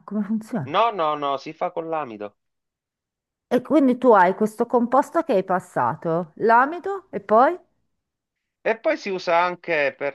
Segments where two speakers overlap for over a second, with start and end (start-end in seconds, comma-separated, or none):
none